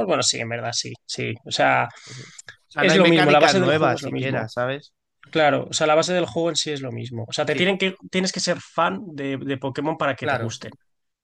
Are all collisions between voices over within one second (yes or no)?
no